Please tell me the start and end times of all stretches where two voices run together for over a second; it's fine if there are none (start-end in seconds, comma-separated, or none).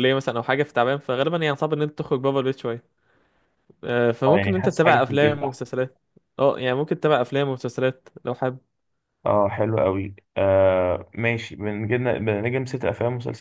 4.3-5.7